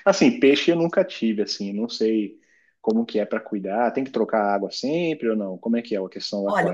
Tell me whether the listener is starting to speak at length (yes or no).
yes